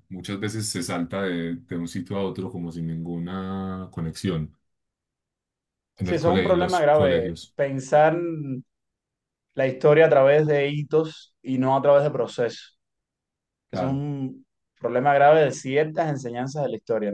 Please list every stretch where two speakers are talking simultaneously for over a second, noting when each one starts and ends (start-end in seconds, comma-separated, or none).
6.0-7.6